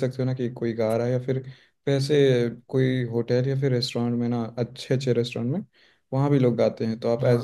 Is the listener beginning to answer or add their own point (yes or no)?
no